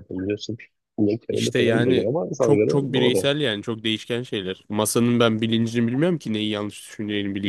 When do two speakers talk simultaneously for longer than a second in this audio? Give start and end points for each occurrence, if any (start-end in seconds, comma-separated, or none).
1.3-3.3